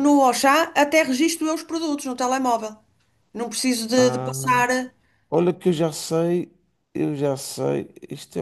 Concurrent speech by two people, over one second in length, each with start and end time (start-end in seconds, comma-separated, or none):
none